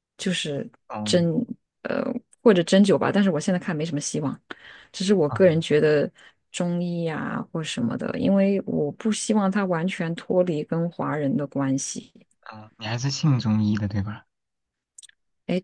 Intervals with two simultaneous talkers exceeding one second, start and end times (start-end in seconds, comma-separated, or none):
none